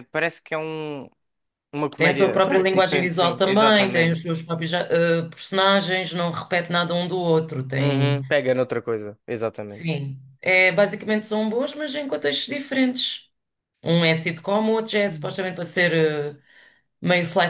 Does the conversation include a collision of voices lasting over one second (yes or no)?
yes